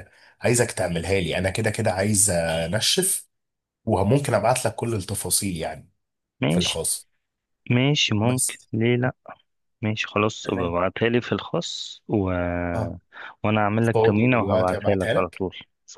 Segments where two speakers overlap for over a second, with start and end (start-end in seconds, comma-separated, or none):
13.8-15.4